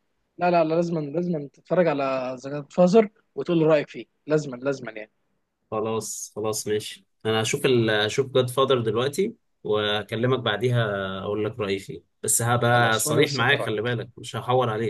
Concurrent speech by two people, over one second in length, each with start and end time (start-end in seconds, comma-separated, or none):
12.7-14.0